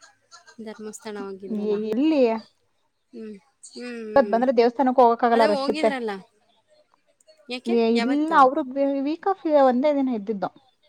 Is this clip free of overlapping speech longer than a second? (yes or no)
yes